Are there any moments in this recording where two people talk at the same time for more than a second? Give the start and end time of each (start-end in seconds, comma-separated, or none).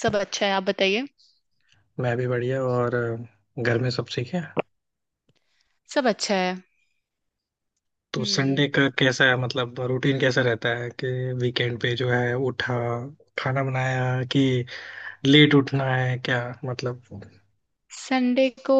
none